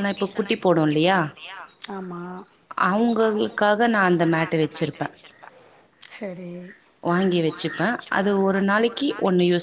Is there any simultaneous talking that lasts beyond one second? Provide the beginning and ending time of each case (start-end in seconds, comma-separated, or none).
3.3-5.1